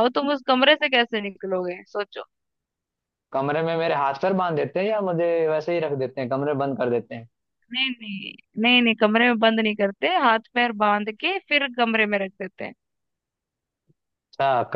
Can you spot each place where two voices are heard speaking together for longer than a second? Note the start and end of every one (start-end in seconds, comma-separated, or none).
none